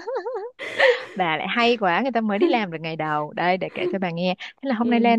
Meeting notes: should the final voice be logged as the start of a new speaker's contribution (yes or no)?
no